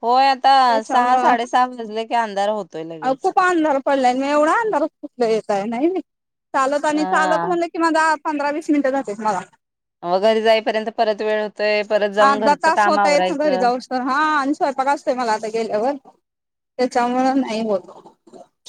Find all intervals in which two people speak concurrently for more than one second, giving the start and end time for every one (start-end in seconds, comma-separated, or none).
12.3-13.7